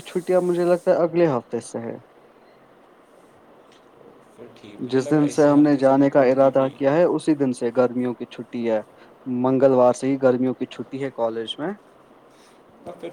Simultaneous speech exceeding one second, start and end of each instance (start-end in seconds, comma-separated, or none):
4.9-6.7